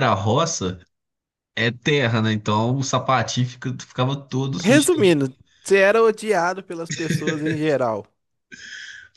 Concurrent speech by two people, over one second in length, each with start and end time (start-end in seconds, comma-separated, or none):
none